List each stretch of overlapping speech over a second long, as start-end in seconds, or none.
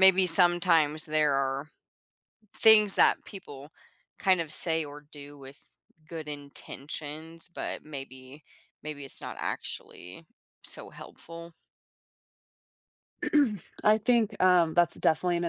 none